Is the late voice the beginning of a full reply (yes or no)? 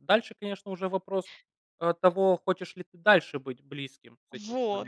yes